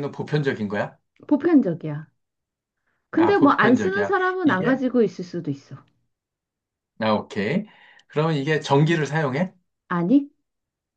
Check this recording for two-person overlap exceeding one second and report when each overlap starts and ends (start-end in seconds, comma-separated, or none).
3.2-4.8